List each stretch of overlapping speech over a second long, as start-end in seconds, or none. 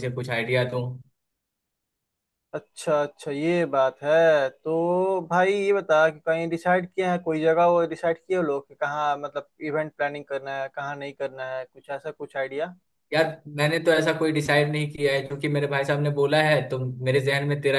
none